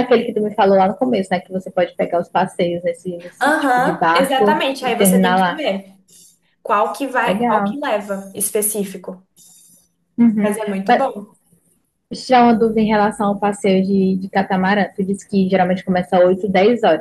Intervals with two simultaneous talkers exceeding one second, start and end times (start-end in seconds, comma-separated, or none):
3.4-5.7